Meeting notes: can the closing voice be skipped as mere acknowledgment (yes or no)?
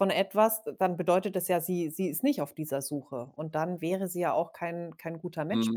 no